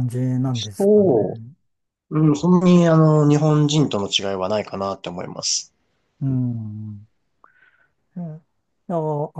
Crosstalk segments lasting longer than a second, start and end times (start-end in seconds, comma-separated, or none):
none